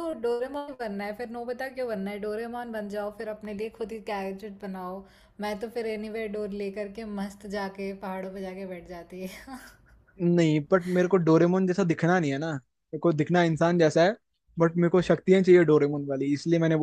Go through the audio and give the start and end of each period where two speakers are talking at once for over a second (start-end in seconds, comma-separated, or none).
none